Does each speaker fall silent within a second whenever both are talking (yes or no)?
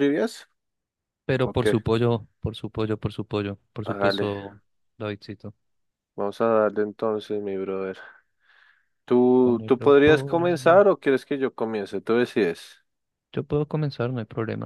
no